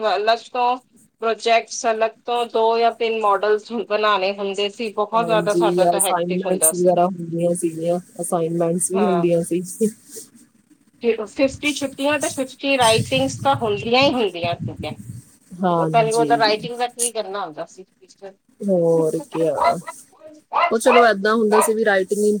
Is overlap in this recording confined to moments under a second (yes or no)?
no